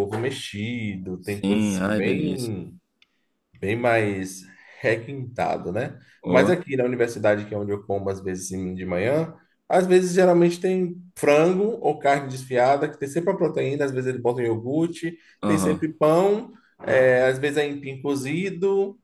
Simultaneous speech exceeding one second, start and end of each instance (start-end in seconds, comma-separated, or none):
1.2-2.5